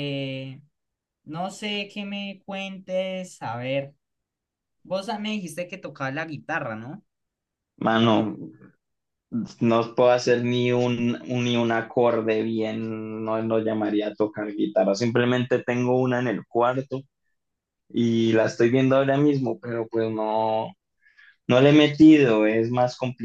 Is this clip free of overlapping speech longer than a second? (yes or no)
yes